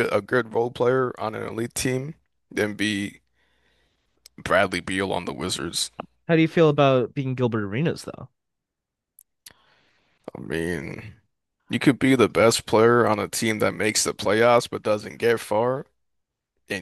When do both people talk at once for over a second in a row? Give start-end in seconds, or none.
none